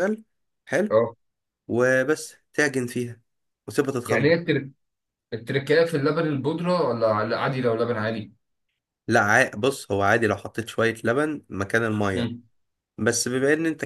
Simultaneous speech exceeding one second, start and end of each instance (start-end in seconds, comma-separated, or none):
none